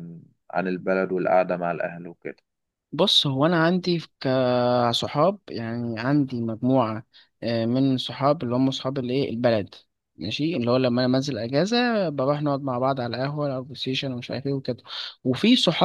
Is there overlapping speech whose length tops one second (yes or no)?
no